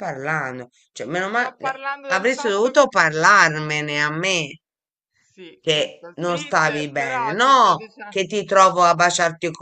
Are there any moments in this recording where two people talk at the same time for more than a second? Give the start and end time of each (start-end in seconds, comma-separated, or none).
1.3-2.8, 5.6-8.2